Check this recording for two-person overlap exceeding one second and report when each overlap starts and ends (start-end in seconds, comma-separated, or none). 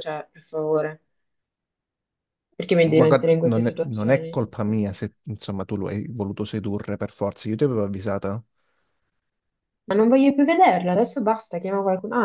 2.8-4.5